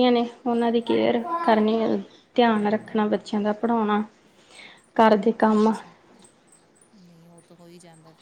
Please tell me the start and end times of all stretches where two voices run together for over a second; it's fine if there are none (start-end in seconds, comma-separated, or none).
none